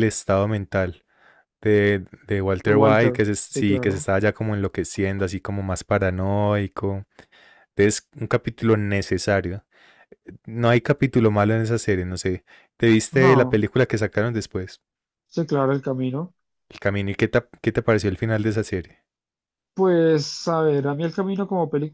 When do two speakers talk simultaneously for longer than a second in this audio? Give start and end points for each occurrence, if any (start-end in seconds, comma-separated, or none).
2.6-4.1